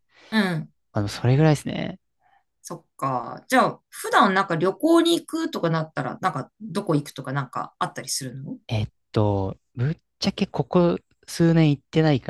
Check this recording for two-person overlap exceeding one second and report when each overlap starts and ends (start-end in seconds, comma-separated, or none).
none